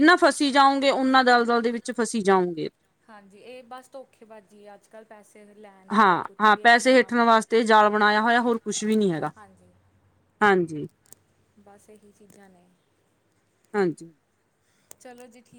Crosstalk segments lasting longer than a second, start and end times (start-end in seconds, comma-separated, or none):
6.0-7.4